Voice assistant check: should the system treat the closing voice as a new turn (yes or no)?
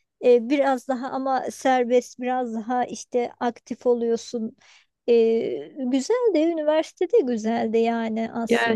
yes